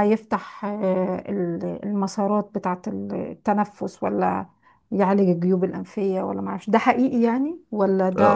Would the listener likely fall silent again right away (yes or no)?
no